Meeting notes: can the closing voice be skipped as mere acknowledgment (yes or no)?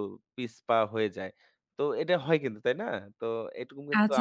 no